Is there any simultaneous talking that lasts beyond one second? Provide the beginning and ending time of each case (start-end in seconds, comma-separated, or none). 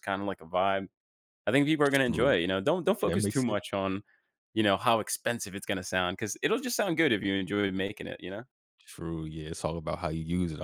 none